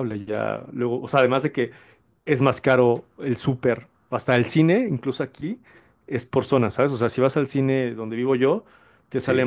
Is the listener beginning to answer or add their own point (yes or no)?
no